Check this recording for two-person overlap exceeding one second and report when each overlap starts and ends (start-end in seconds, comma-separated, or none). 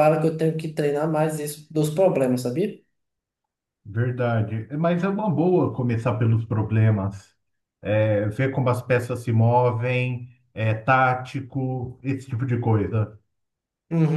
none